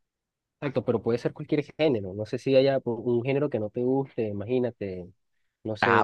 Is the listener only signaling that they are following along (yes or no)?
no